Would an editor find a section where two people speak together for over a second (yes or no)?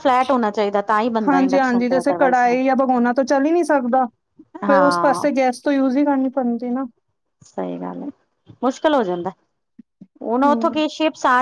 yes